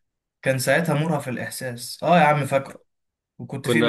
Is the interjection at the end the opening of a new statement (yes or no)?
no